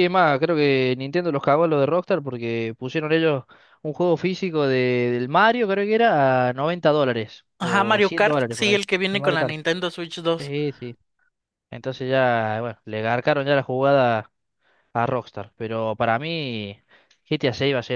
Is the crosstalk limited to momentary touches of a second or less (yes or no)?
no